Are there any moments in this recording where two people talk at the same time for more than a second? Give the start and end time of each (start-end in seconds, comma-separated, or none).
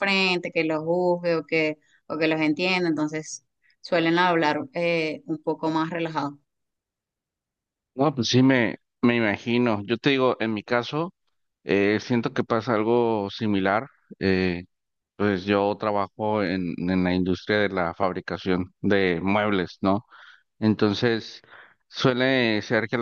none